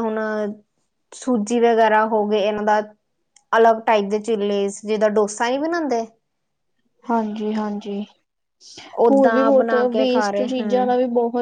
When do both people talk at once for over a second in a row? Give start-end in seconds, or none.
9.1-10.9